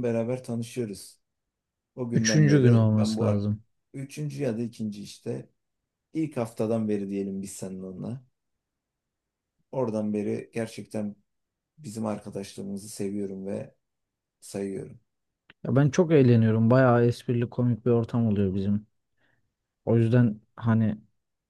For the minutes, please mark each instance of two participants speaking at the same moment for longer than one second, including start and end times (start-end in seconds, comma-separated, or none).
2.1-3.4